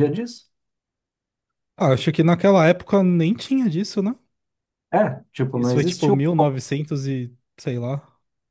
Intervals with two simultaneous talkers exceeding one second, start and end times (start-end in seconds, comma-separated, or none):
5.5-6.8